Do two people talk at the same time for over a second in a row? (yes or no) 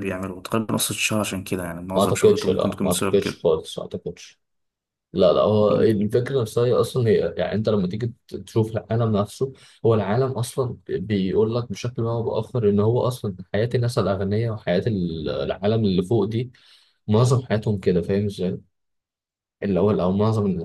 yes